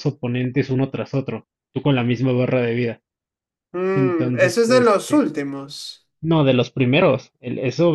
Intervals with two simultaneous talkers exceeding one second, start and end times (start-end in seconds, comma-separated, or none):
3.9-5.3